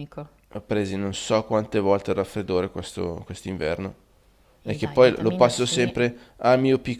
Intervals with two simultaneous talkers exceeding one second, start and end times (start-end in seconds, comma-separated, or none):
4.6-5.9